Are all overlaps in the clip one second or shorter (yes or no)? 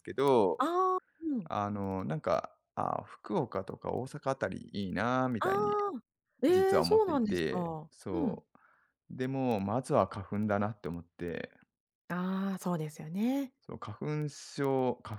no